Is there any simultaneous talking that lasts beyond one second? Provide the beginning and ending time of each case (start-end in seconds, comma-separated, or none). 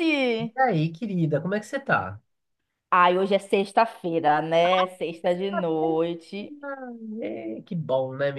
none